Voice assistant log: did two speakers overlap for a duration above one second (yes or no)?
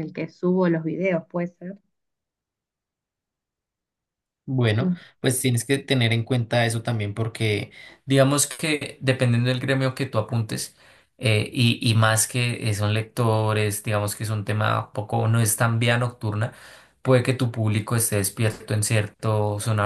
no